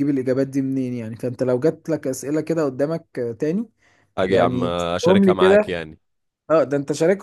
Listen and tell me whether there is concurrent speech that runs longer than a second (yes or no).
yes